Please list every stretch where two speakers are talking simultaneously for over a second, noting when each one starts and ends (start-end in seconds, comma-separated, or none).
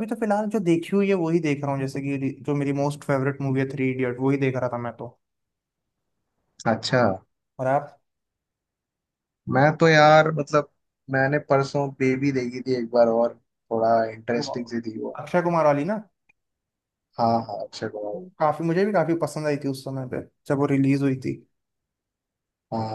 none